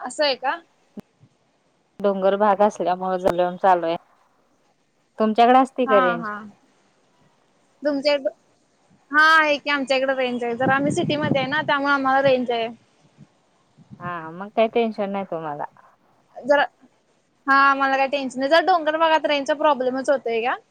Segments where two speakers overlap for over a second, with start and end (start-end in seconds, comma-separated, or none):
none